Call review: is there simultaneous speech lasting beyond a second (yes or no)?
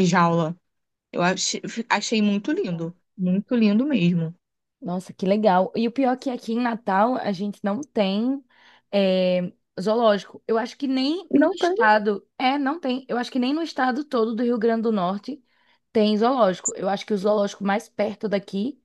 no